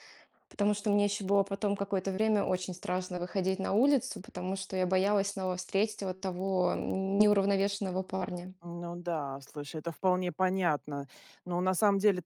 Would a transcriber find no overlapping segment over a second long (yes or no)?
yes